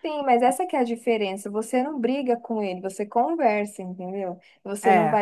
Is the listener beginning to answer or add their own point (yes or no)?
no